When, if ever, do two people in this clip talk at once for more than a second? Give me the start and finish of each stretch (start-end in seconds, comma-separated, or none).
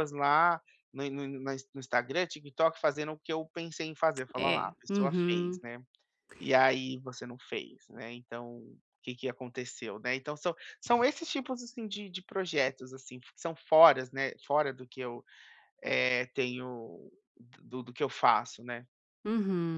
4.4-5.6